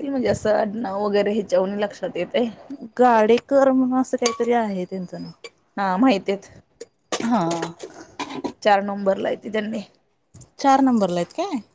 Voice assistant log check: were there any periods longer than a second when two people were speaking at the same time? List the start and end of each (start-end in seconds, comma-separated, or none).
none